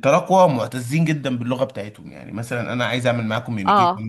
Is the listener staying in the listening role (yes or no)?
yes